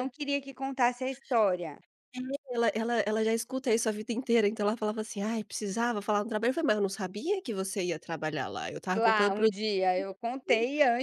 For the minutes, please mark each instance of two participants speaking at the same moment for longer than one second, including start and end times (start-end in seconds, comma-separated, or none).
none